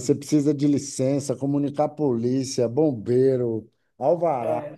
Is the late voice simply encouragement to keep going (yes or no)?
yes